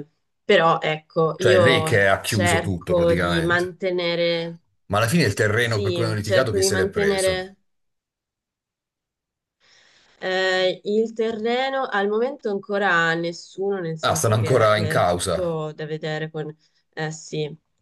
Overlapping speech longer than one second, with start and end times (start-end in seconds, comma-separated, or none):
1.4-3.8, 5.6-7.5, 14.0-15.6